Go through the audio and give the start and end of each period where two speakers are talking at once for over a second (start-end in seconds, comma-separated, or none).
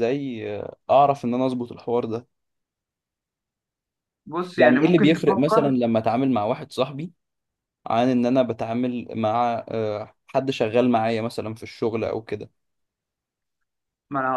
4.6-5.8